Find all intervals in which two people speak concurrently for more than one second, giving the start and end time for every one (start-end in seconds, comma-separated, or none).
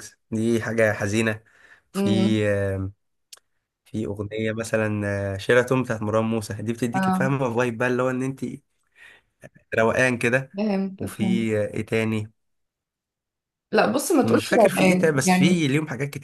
14.2-15.6